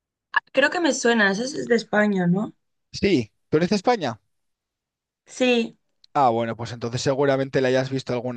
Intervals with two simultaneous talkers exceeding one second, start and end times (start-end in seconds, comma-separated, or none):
none